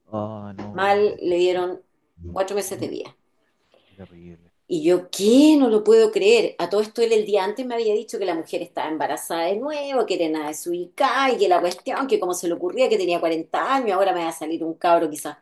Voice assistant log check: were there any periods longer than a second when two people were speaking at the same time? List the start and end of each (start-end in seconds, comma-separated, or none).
none